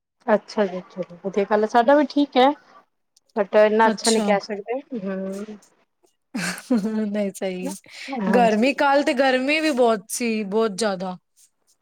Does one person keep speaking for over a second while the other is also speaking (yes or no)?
no